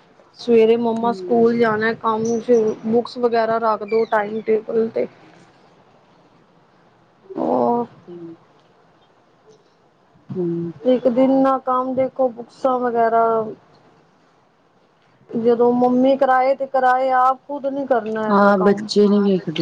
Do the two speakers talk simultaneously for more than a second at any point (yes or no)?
no